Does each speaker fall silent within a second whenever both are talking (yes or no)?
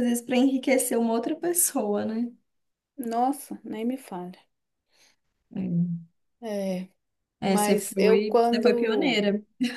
no